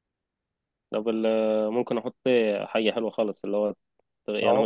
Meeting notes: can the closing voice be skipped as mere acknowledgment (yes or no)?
yes